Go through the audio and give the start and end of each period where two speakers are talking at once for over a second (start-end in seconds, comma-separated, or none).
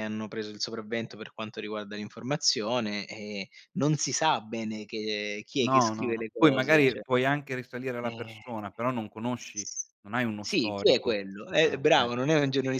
5.6-7.0, 10.4-12.1